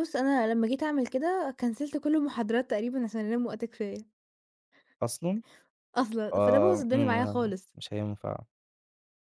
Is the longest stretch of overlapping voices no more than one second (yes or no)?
no